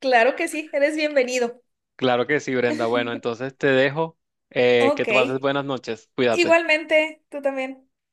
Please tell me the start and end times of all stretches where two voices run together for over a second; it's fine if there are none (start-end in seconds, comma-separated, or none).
none